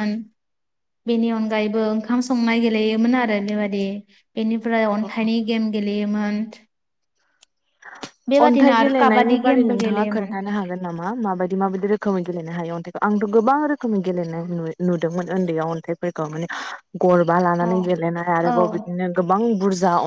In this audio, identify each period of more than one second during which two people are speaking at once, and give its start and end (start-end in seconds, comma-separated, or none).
8.4-10.3